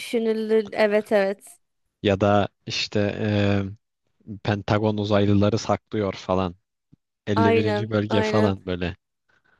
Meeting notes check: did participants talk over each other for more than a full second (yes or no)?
yes